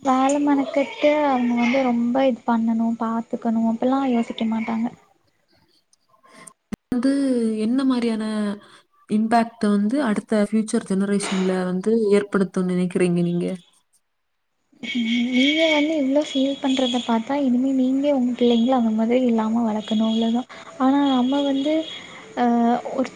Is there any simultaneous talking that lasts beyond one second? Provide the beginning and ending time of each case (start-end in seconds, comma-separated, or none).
none